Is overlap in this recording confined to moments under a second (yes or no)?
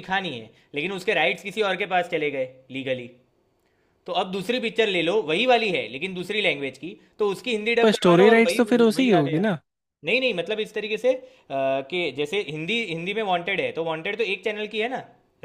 no